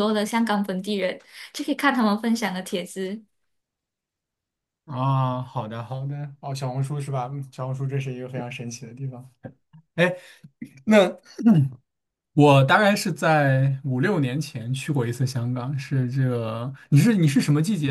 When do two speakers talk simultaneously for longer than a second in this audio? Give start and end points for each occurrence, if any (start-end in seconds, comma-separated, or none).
none